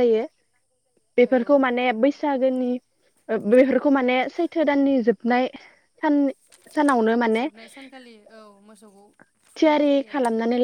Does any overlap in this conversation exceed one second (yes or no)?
no